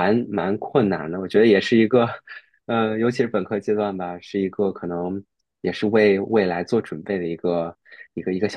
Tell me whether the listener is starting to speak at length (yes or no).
yes